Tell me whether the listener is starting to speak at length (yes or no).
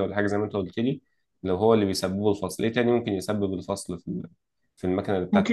yes